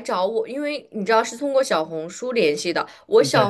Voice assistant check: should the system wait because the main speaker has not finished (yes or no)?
yes